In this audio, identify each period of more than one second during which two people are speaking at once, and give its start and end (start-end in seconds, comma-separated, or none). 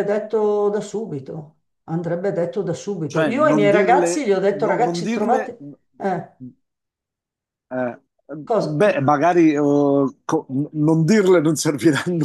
3.0-5.5